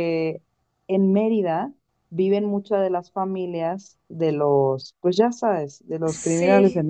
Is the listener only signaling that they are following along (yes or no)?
yes